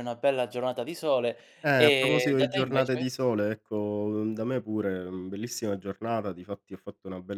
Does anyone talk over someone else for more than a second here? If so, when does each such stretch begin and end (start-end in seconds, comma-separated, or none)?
1.6-3.1